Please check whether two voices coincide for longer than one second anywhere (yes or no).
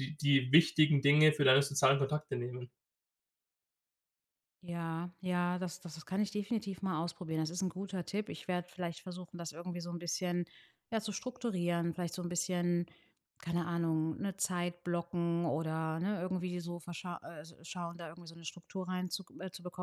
no